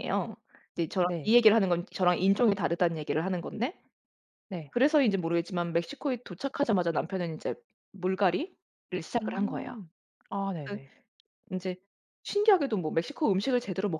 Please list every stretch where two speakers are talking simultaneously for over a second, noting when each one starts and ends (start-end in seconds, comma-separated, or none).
none